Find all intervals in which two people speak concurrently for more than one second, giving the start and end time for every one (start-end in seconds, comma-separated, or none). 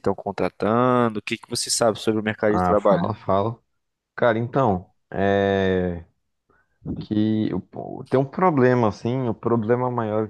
none